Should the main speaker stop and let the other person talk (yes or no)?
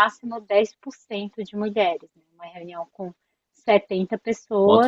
yes